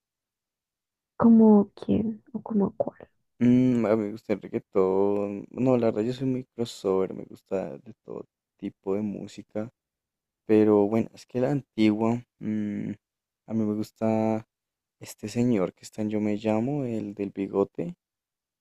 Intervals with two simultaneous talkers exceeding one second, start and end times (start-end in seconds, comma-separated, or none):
none